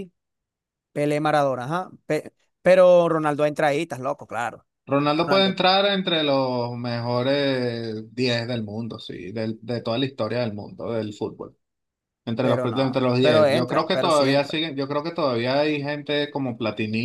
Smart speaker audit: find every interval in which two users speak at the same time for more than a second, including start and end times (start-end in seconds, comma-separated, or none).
12.4-14.6